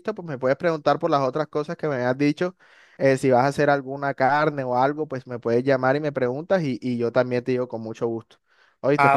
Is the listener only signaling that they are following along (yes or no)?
no